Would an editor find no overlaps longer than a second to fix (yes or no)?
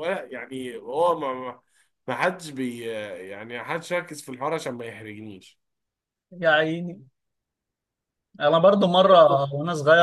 yes